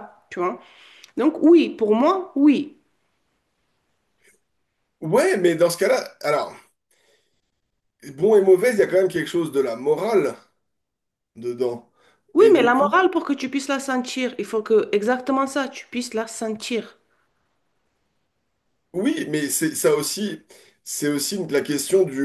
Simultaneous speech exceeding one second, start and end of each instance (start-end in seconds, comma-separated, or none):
none